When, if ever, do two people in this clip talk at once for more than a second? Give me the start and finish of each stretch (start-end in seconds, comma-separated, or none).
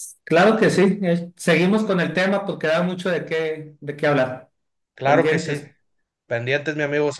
none